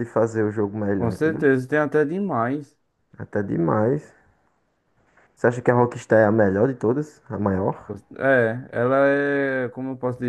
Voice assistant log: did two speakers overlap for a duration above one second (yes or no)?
no